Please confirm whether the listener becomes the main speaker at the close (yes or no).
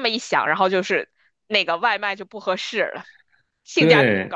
yes